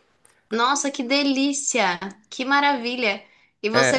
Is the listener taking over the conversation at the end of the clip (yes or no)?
no